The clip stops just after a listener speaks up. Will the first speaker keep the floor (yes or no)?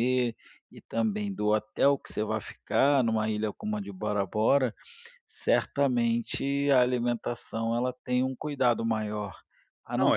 yes